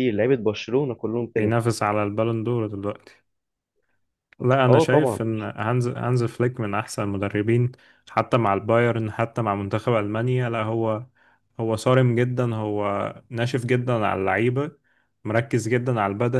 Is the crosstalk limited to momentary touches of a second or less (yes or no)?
yes